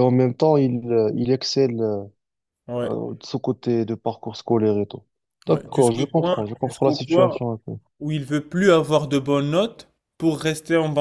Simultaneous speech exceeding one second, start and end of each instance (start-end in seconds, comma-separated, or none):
5.5-7.4